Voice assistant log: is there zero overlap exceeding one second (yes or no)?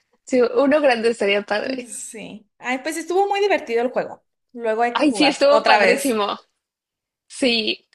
no